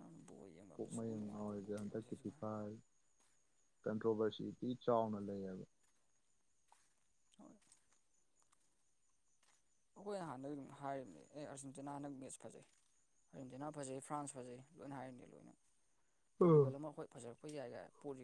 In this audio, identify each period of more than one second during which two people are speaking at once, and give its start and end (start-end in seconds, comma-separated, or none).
0.7-2.4